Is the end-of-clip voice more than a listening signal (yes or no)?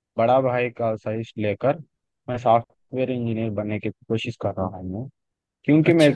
no